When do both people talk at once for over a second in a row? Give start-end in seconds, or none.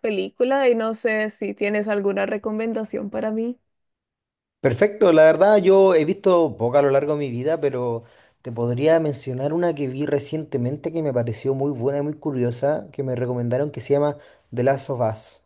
none